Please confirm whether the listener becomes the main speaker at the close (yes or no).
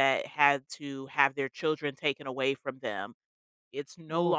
no